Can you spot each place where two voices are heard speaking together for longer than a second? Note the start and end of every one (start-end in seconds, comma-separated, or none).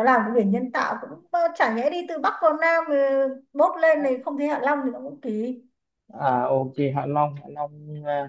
none